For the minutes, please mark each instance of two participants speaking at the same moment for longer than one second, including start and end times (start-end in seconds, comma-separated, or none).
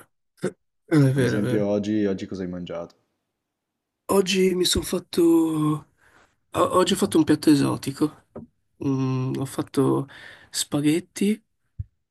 none